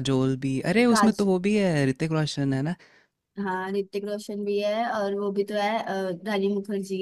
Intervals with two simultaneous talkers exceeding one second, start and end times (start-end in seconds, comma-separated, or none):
none